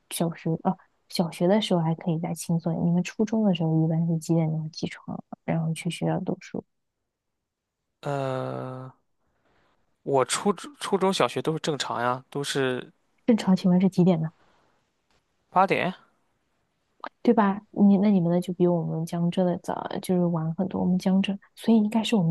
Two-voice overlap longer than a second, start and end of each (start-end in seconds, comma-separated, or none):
none